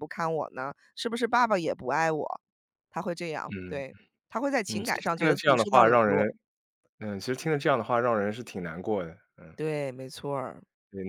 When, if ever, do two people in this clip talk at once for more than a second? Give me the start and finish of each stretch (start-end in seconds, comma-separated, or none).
4.7-6.3